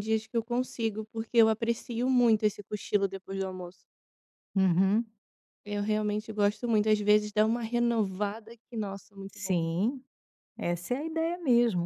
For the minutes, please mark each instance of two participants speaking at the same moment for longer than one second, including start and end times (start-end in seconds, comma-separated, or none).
none